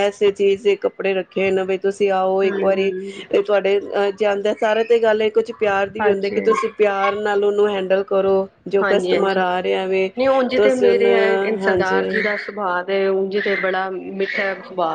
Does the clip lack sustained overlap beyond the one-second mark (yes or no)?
no